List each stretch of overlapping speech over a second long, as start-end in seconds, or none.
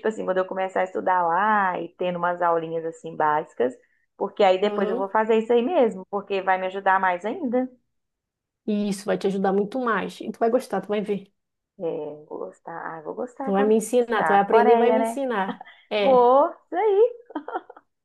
13.4-15.2